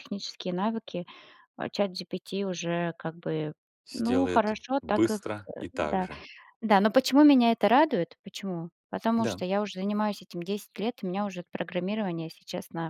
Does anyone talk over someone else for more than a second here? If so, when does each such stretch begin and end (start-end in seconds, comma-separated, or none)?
3.9-6.1